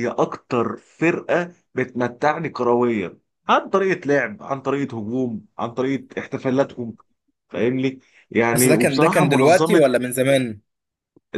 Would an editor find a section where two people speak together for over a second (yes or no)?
yes